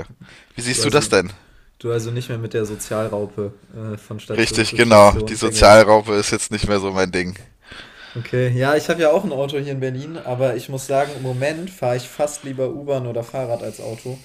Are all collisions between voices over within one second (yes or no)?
no